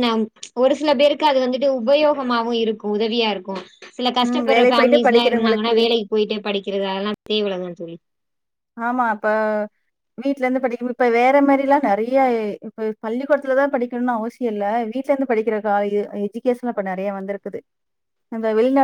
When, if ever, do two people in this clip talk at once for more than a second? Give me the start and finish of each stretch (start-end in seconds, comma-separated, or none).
4.3-5.7